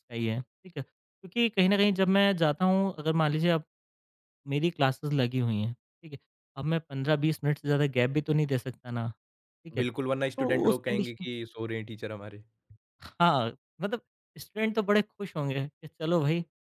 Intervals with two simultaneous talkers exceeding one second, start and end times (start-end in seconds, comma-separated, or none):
9.8-11.2